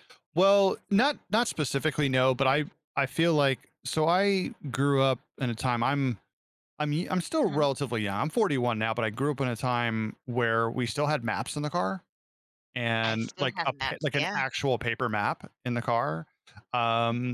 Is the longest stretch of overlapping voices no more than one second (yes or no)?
no